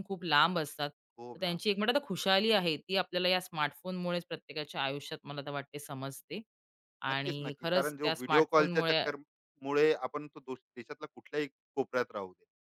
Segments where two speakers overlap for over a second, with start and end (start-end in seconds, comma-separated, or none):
7.1-9.0